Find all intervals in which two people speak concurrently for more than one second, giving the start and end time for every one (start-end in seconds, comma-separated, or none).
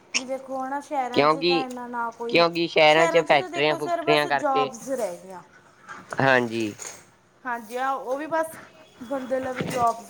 3.3-4.7